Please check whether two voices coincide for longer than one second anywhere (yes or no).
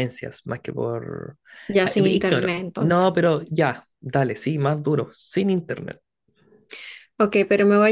yes